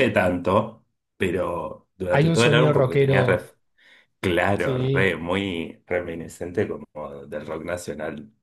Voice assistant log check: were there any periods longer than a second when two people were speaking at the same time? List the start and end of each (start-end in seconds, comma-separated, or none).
2.1-3.5